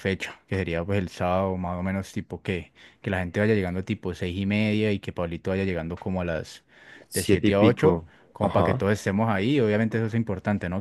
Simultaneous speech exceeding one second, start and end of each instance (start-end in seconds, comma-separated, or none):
7.1-8.9